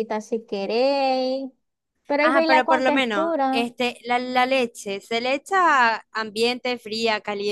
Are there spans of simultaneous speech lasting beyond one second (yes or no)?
yes